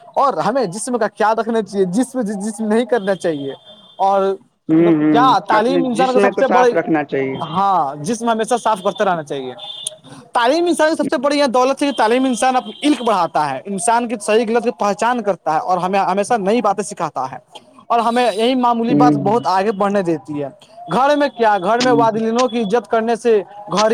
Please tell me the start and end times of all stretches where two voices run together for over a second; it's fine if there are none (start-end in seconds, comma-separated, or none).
4.8-6.7